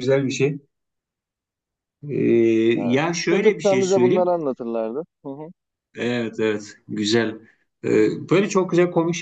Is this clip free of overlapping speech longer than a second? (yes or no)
no